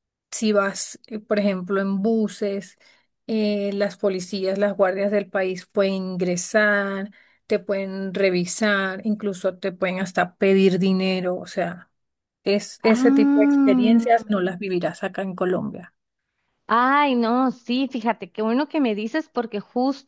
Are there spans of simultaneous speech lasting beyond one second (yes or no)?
yes